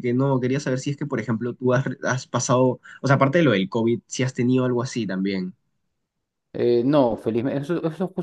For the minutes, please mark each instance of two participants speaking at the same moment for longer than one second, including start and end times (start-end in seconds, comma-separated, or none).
none